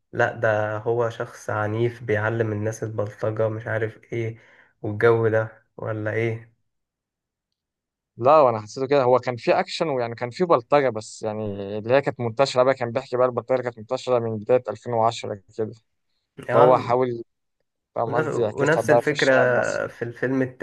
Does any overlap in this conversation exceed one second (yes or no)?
yes